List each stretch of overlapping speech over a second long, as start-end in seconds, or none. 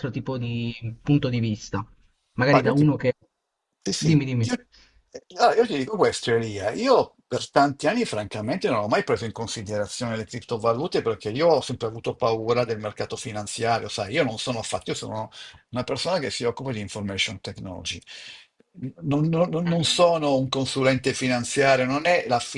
none